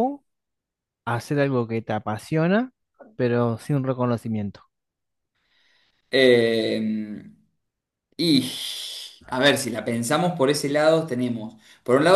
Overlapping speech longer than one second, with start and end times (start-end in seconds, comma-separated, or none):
none